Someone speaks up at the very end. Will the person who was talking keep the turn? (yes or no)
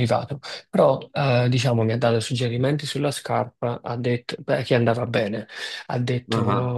yes